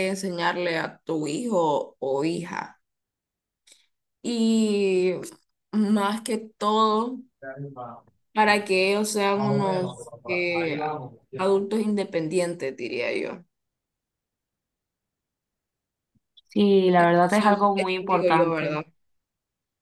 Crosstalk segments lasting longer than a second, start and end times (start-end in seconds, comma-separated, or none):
17.0-18.8